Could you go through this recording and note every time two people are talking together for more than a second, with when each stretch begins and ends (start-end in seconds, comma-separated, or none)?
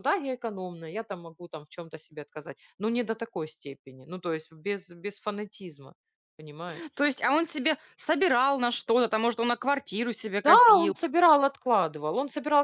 none